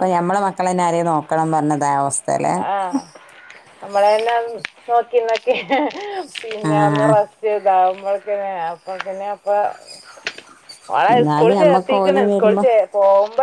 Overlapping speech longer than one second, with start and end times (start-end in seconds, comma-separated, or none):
11.1-12.6